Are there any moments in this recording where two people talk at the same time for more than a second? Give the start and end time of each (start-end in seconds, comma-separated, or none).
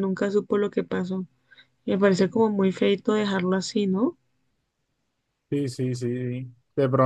none